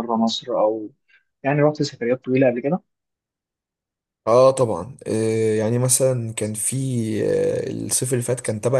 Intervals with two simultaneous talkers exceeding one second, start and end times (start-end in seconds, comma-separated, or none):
none